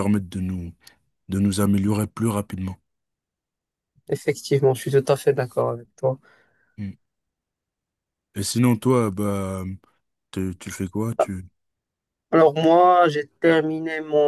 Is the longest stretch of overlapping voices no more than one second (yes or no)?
yes